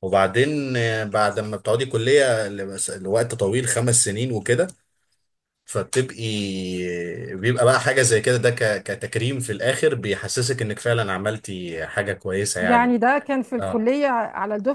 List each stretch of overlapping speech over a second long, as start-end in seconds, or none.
none